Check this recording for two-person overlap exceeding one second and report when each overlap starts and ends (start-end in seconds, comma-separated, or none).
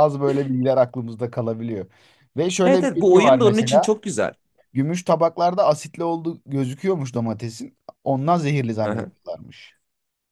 2.6-3.9